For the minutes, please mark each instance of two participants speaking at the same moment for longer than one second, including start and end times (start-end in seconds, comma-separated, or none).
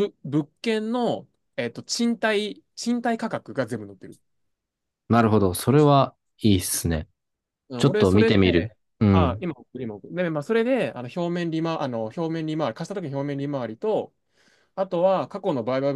7.8-9.5